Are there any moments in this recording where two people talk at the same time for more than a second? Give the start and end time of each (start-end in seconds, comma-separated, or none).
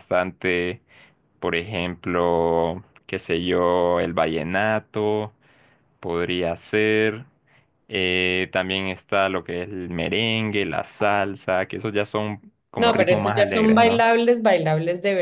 12.8-14.1